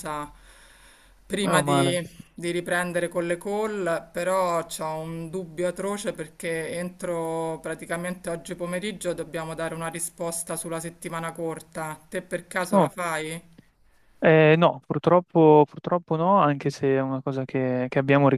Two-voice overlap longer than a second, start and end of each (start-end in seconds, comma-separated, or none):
none